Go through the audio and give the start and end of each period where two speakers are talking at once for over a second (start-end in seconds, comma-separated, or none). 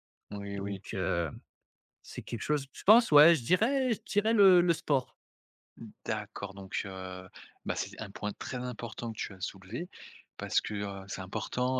none